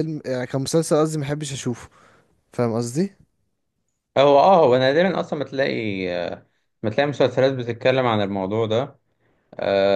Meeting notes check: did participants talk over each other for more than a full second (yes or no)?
no